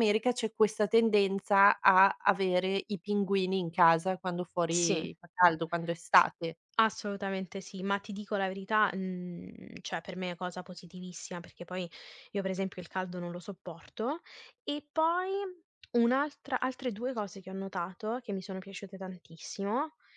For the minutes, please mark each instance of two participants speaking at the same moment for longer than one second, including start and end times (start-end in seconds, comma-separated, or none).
none